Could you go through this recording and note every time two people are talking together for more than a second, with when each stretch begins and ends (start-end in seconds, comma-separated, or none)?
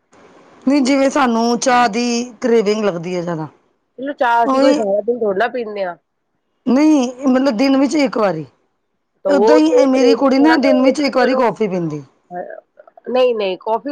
9.3-11.5